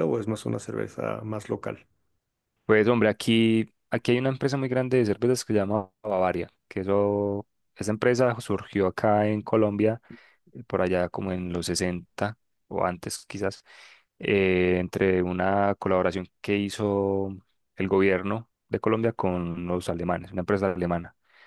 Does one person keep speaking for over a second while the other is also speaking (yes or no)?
no